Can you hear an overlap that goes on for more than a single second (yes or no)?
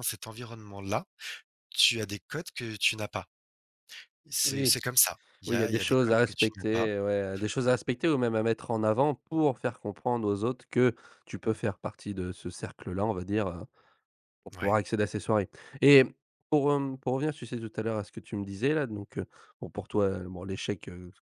yes